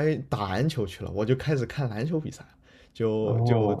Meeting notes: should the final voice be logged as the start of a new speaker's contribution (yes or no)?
no